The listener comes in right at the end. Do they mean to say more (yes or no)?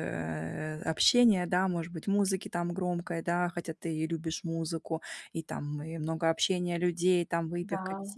no